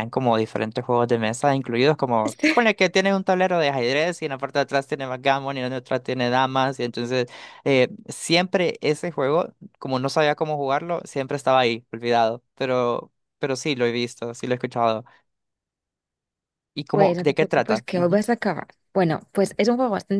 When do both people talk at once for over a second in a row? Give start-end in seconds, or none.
16.9-18.2